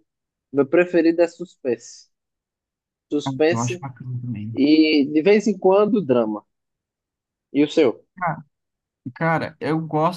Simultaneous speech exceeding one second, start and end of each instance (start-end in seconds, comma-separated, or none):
none